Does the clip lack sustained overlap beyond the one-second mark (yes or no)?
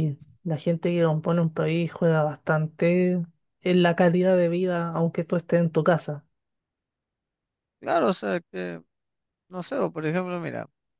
yes